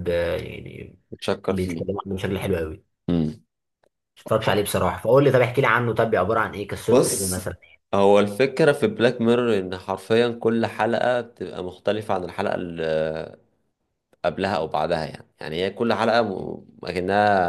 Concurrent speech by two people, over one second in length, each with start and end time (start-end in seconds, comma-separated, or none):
none